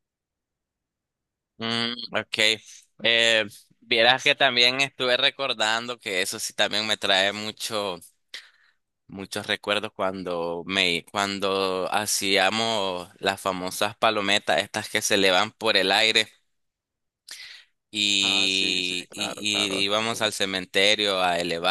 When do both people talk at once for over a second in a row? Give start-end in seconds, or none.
18.2-19.9